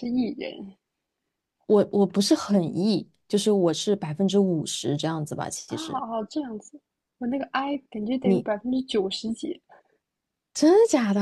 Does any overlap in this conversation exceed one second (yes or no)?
no